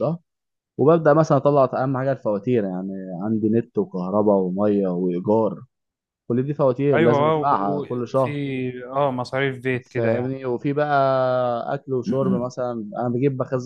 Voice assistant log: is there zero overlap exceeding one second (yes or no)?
no